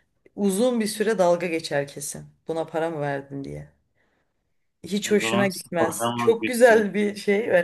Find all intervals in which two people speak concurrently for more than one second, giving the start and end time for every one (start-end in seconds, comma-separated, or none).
5.1-6.8